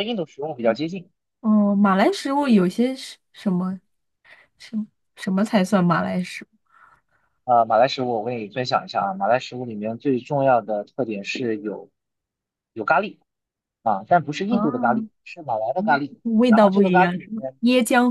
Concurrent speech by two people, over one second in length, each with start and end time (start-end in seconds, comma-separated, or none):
15.8-17.6